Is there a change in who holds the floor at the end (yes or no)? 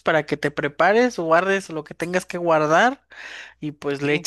no